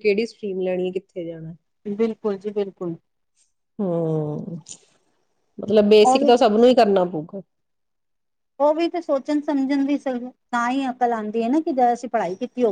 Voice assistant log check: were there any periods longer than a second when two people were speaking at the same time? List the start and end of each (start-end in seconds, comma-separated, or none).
none